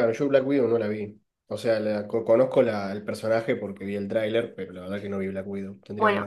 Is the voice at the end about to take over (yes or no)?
yes